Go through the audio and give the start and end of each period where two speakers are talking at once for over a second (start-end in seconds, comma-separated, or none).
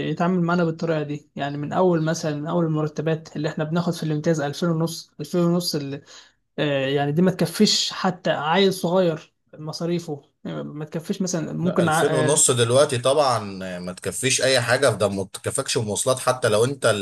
none